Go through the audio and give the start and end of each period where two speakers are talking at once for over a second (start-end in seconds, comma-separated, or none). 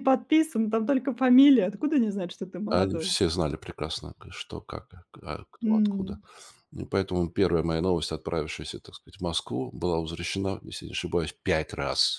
none